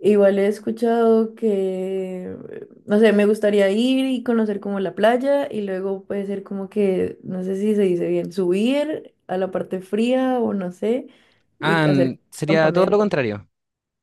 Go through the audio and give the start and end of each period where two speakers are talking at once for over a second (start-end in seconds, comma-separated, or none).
11.6-13.1